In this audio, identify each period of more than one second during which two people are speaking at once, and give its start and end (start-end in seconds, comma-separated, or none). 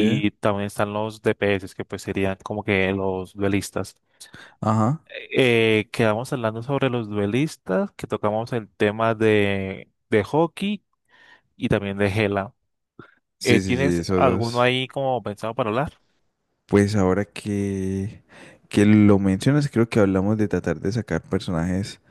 13.4-14.7